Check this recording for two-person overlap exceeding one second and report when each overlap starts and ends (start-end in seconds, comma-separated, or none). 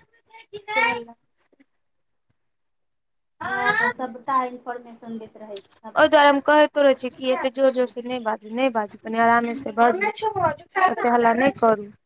none